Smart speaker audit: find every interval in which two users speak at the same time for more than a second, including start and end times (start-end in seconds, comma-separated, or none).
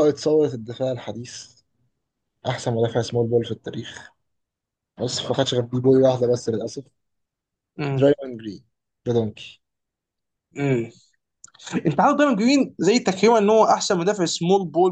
none